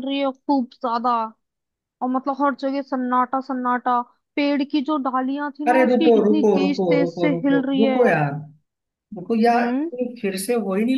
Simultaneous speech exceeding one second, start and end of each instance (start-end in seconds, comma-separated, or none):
5.7-8.0